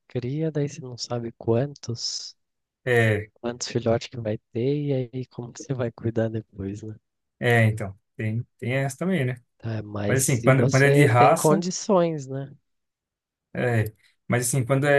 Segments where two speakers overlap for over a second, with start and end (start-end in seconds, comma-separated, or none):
10.1-11.7